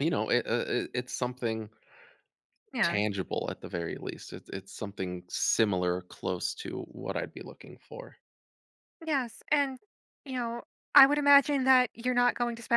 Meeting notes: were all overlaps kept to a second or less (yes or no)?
yes